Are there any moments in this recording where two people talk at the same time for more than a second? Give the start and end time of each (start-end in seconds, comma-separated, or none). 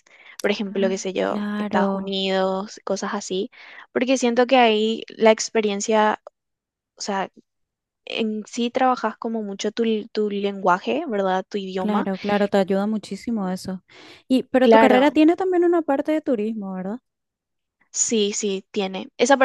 0.7-2.2